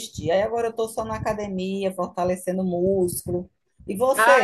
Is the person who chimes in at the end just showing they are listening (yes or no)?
no